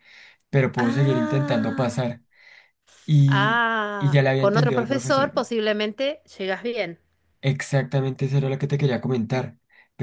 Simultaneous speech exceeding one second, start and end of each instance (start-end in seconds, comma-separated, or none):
0.8-2.1, 3.3-5.4